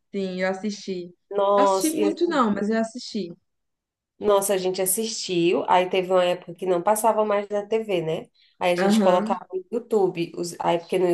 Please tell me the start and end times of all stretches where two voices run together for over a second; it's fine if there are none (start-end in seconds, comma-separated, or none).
none